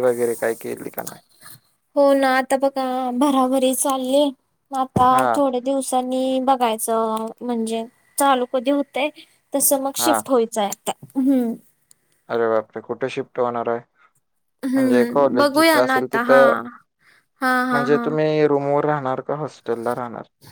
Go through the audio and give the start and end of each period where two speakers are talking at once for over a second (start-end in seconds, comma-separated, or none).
14.7-16.4